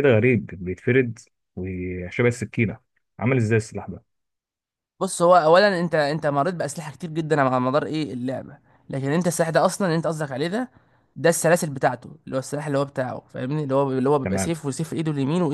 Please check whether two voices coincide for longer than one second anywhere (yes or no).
no